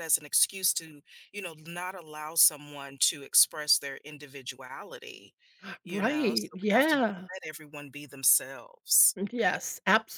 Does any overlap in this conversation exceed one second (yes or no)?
yes